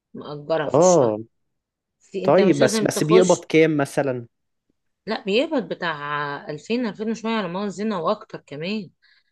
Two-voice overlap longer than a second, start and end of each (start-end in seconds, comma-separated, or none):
2.2-3.5